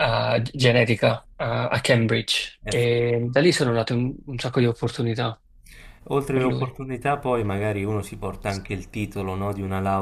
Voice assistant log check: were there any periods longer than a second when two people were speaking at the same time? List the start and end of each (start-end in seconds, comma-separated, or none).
none